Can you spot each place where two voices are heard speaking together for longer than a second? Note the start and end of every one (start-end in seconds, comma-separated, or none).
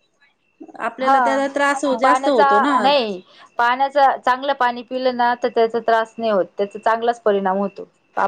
none